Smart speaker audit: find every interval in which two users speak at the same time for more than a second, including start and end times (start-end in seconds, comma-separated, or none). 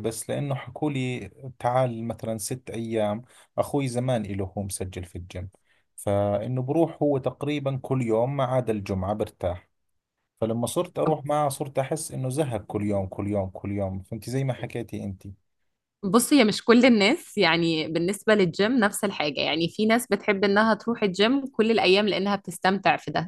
none